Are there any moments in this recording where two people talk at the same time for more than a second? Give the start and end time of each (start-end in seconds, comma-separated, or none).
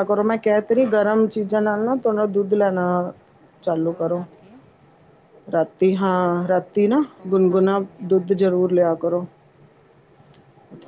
7.2-8.9